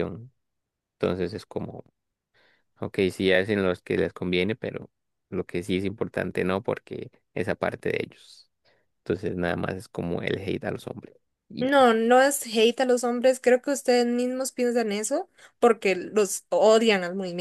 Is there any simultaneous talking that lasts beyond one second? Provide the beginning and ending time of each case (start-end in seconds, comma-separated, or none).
none